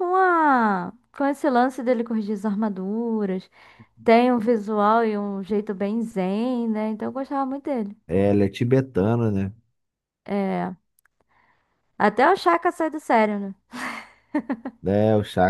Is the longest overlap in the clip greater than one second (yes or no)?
no